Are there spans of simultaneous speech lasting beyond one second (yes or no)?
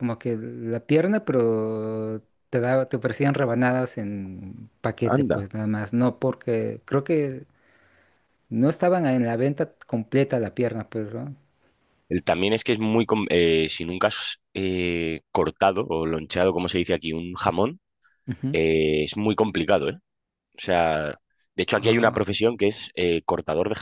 no